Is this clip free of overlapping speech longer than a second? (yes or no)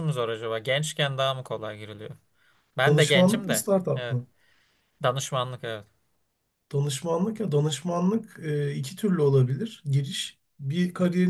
no